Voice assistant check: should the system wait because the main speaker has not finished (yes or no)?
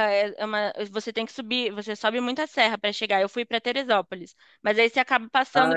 yes